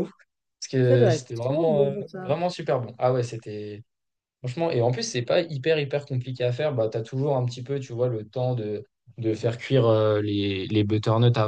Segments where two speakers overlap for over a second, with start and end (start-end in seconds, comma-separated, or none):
0.8-2.4